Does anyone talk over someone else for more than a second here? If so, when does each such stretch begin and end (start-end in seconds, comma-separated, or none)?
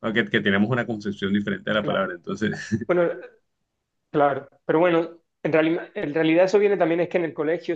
none